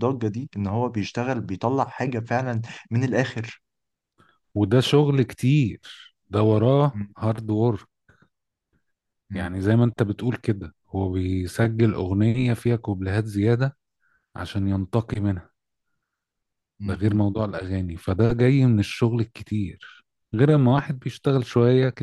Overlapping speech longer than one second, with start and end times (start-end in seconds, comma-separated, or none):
none